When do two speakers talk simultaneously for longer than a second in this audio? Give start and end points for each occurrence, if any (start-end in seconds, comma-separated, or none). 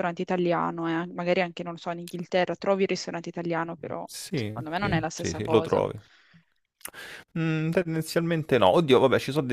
4.0-5.8